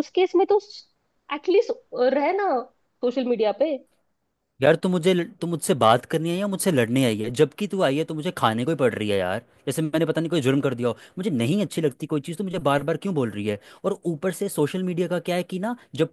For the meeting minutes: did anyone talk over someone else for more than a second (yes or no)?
no